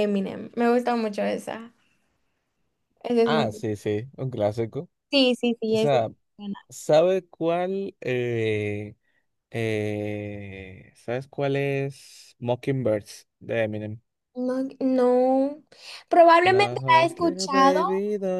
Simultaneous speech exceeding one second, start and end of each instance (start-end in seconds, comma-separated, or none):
16.4-17.8